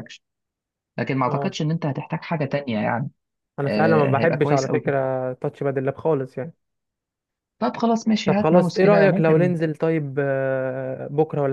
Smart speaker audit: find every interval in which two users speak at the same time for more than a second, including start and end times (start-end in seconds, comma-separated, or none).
3.6-4.9, 8.2-9.5